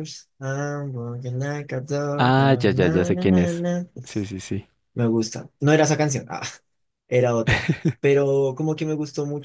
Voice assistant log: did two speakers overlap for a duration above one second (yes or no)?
yes